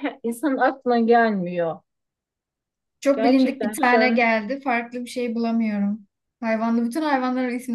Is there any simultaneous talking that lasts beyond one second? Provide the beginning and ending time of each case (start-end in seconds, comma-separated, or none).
3.1-4.3